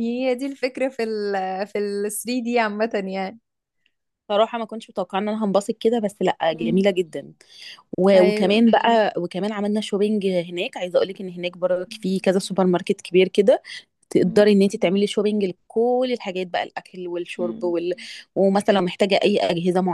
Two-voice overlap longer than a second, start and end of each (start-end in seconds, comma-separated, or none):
none